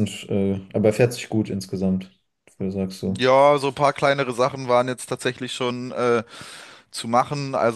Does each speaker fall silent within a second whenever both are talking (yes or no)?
yes